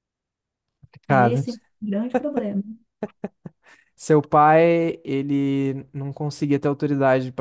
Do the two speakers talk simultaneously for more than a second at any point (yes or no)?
no